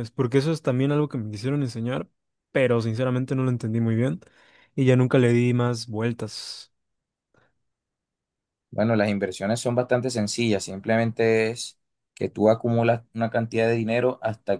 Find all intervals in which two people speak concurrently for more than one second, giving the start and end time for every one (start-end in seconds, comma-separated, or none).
none